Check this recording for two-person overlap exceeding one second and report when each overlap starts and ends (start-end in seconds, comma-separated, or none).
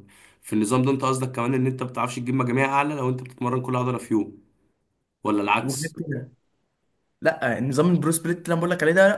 none